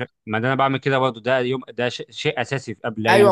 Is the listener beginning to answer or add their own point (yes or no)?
yes